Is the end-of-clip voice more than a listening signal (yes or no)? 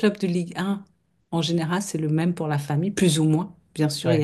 no